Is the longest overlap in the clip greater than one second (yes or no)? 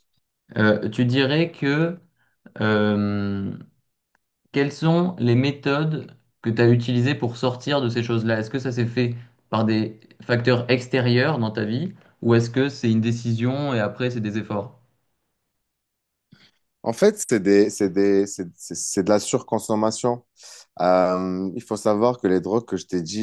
no